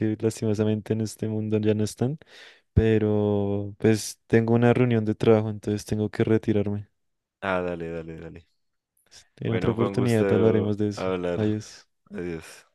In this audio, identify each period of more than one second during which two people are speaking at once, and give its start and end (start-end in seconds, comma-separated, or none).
9.4-11.5